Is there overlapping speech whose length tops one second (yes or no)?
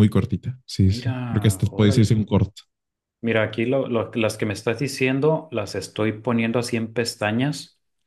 yes